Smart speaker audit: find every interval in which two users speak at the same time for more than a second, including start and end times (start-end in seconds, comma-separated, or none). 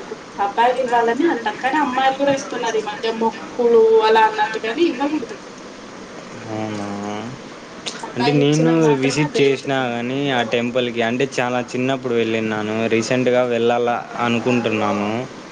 8.2-9.8